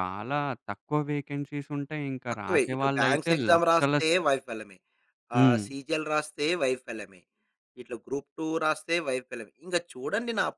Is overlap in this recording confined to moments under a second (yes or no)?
no